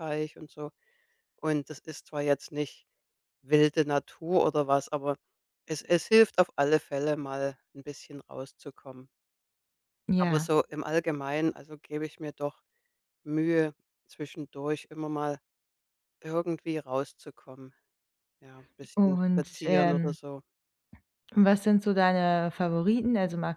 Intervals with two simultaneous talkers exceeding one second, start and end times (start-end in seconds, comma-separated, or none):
18.9-20.2